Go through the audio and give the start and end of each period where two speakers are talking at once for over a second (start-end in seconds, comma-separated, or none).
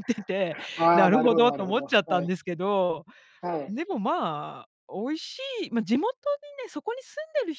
0.9-2.3